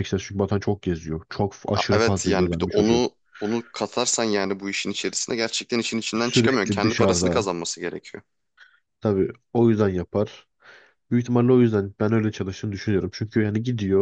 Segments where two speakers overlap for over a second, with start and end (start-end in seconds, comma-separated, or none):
1.7-3.1, 6.2-7.5